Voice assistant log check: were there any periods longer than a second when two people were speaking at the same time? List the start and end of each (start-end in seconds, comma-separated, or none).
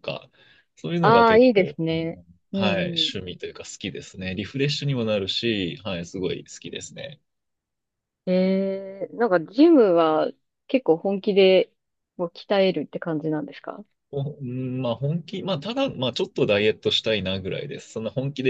1.0-3.1